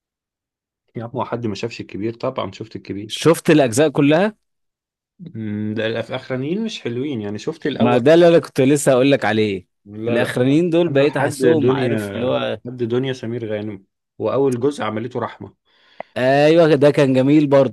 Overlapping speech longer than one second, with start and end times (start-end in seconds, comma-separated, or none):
10.1-12.0